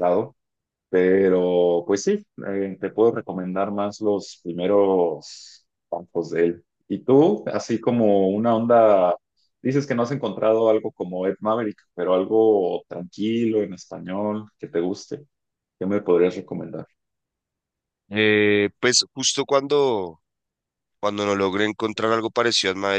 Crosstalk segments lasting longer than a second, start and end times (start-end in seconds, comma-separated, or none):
none